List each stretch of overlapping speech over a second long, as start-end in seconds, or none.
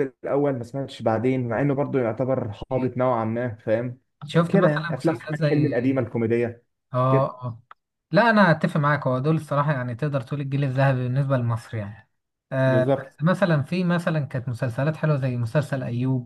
4.5-5.7